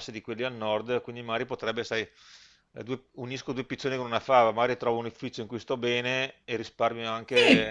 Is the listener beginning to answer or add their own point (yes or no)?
yes